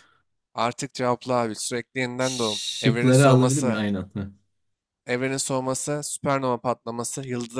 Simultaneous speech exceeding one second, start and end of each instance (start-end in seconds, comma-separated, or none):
2.2-3.8